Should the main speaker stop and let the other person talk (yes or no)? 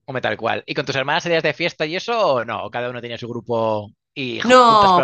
yes